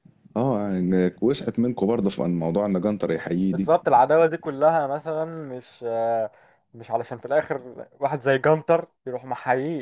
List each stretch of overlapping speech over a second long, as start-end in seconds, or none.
none